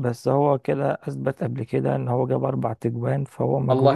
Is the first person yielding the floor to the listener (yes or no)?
yes